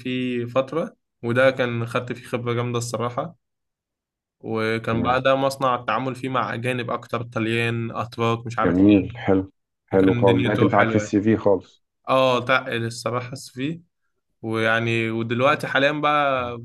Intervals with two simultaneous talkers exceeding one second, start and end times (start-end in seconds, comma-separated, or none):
9.9-11.2